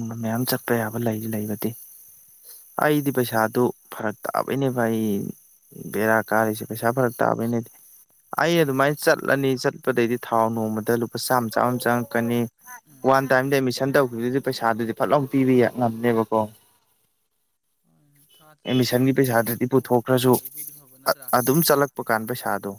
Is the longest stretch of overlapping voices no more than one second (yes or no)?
no